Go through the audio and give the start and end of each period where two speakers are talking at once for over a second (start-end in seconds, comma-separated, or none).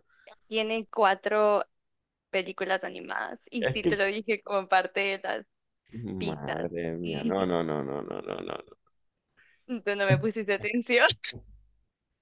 6.2-7.6